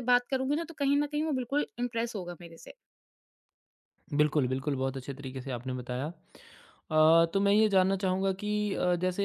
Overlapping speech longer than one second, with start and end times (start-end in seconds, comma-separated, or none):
none